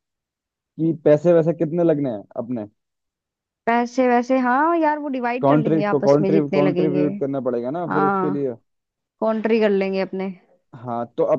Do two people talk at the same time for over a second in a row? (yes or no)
yes